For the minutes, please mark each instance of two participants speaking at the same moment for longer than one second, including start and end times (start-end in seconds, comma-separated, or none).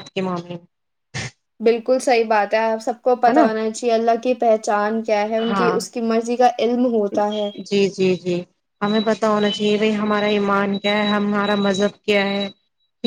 none